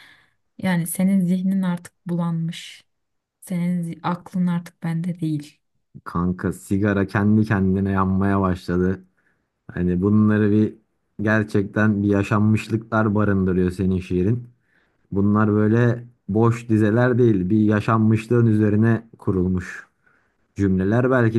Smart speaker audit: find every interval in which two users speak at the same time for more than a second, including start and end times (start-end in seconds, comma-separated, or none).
none